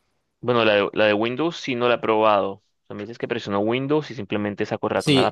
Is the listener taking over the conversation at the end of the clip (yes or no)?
yes